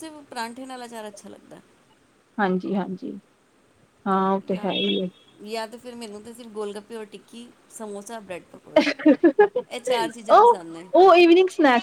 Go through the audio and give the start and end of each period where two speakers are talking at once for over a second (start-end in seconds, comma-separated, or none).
none